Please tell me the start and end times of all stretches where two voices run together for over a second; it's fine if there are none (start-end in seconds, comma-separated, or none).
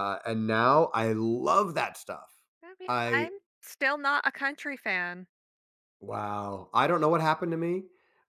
none